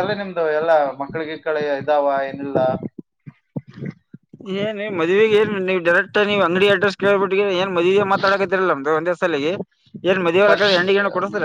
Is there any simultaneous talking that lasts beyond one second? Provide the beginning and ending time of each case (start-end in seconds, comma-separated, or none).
none